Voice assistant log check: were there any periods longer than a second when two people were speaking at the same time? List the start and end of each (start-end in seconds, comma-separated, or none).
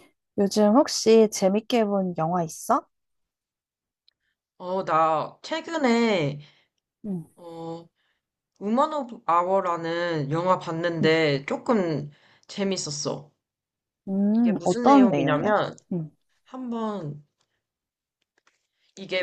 14.3-15.5